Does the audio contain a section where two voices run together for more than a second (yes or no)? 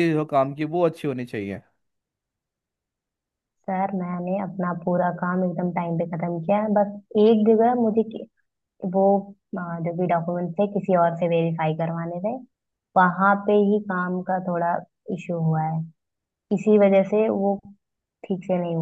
no